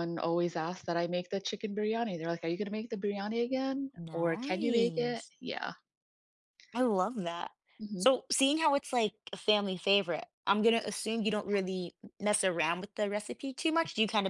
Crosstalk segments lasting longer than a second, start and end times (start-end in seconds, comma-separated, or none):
4.0-5.3